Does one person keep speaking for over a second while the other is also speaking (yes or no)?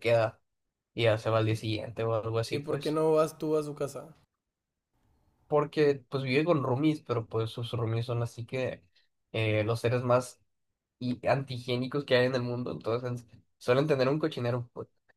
no